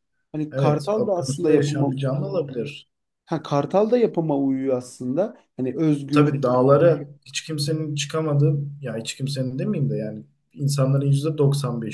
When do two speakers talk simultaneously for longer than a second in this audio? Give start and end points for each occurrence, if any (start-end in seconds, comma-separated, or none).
0.5-1.9